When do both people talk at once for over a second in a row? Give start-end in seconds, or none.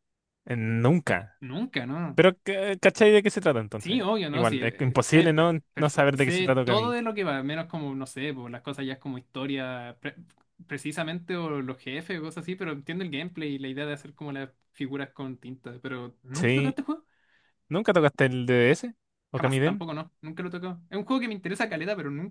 3.8-6.9